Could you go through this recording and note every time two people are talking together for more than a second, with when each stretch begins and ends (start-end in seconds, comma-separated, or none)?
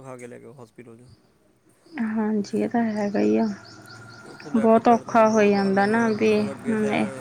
4.6-6.3